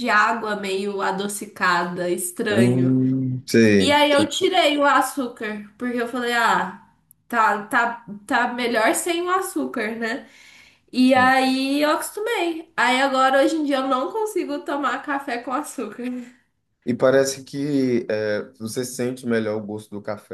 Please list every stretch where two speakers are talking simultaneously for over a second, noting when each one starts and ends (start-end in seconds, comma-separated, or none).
none